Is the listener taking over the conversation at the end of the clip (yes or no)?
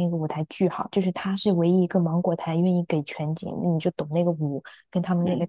no